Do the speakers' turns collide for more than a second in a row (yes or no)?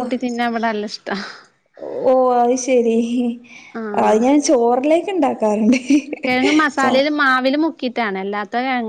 no